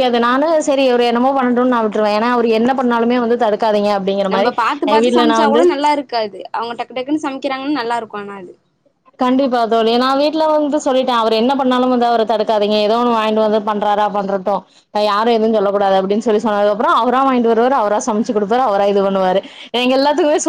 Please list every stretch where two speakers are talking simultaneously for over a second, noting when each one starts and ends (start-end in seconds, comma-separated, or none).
none